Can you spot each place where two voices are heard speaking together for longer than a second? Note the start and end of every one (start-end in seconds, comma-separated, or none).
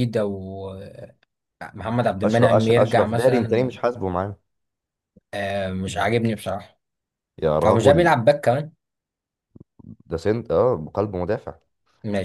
2.2-3.7